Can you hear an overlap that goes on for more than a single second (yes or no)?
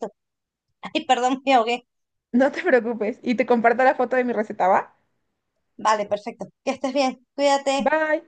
no